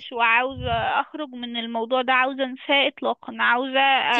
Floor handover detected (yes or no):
no